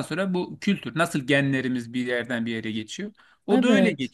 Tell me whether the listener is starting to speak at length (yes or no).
no